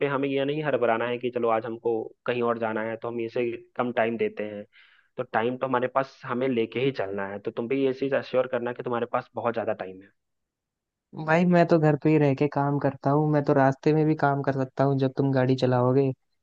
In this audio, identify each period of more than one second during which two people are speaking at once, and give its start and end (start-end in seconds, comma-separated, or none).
none